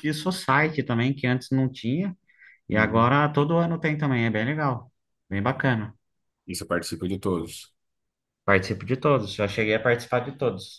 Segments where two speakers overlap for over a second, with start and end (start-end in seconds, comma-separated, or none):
none